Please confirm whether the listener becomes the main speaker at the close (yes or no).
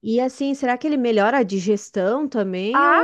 yes